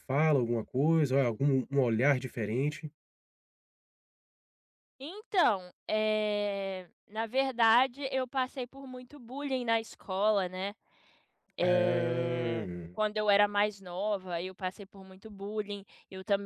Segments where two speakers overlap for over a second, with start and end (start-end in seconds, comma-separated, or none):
11.6-12.9